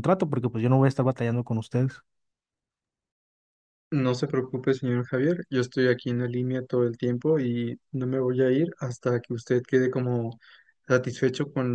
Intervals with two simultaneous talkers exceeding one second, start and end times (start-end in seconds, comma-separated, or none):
none